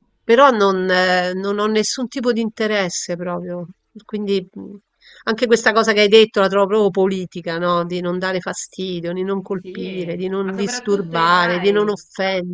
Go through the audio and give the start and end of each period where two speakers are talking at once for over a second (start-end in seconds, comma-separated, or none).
9.6-12.0